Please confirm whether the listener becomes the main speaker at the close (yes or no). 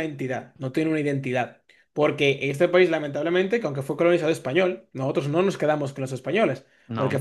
no